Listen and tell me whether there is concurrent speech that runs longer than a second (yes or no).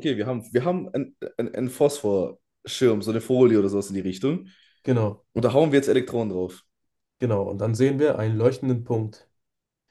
no